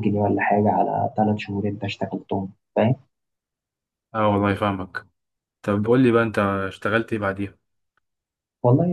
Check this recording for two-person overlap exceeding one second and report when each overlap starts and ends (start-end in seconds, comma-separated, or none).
none